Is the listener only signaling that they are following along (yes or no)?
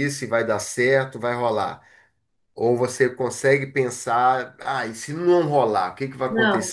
no